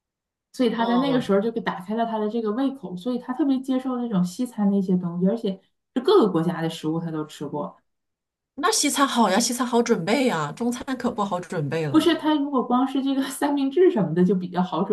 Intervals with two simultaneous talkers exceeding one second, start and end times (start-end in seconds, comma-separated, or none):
none